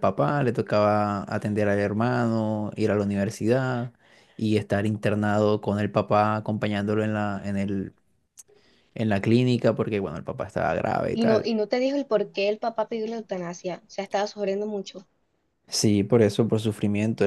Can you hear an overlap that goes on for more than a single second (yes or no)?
no